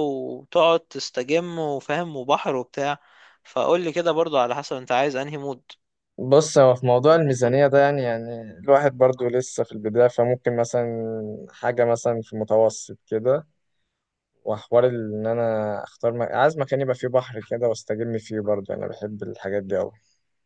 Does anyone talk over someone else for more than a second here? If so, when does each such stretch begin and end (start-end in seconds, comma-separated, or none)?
none